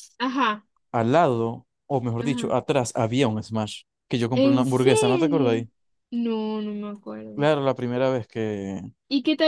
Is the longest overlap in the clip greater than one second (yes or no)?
yes